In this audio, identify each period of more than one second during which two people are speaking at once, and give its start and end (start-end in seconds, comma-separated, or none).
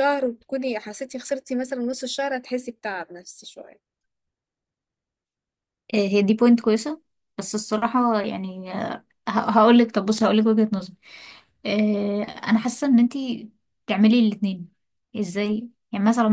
none